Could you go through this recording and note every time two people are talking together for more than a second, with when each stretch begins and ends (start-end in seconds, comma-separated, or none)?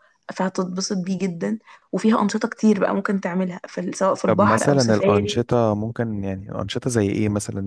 4.2-5.5